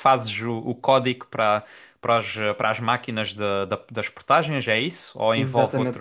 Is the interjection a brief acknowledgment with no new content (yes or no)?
no